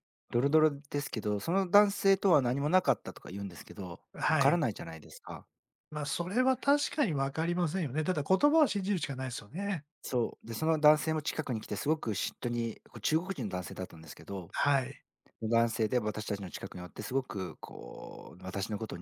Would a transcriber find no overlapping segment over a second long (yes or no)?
yes